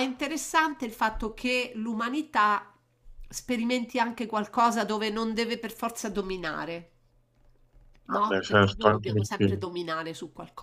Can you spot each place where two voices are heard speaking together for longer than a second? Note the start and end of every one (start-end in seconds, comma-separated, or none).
8.1-9.6